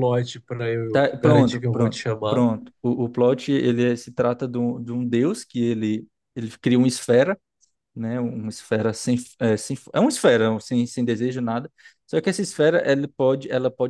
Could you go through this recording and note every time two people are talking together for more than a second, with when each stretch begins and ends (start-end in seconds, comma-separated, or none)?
0.9-2.4